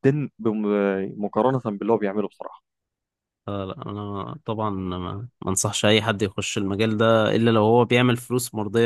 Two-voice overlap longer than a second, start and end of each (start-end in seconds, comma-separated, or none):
none